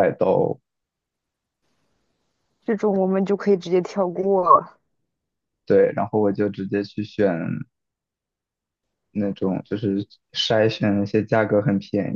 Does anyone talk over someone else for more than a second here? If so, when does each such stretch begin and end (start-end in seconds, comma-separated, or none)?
none